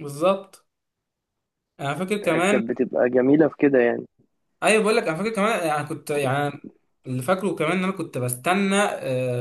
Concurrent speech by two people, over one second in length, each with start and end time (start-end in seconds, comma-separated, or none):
none